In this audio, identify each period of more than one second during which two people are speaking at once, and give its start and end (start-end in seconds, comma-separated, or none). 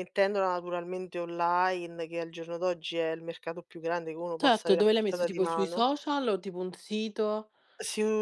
4.4-5.8